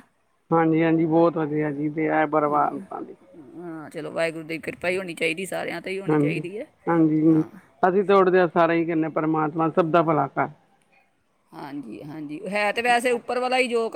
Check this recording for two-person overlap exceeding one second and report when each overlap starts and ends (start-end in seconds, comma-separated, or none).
none